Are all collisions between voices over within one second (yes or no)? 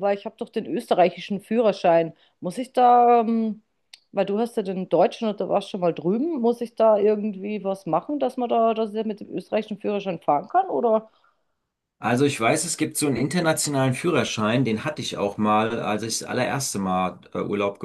yes